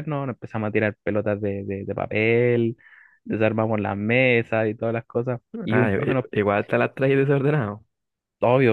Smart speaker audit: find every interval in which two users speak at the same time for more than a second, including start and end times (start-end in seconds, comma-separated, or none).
none